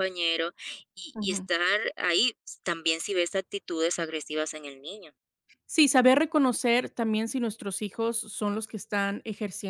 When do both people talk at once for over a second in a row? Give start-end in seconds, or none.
none